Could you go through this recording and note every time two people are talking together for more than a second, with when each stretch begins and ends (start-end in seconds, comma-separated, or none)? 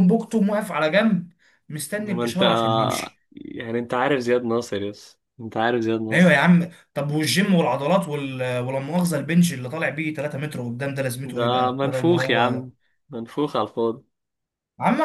11.2-12.6